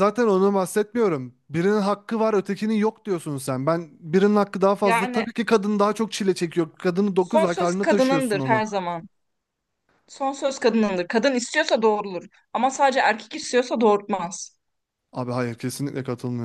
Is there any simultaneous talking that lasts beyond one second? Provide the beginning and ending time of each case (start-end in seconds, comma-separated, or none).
7.2-8.6